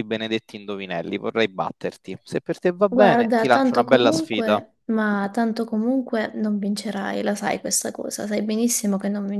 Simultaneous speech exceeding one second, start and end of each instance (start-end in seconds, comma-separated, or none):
2.9-4.6